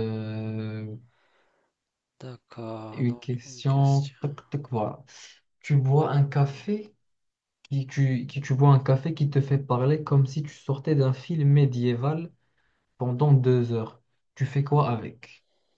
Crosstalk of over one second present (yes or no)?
yes